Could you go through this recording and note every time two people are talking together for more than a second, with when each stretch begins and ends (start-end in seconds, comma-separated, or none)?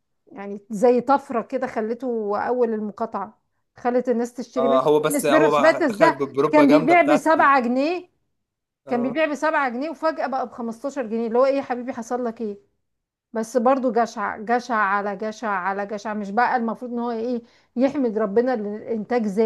4.6-7.5